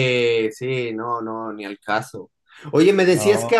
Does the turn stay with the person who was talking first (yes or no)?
yes